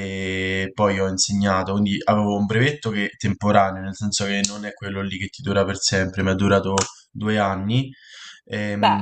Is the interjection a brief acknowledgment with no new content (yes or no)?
yes